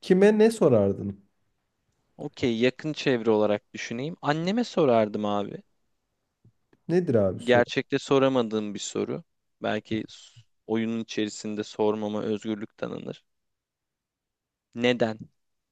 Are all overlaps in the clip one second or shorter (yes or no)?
yes